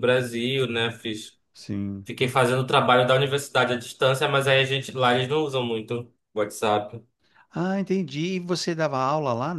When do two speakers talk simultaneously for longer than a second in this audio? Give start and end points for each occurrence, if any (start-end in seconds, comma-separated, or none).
none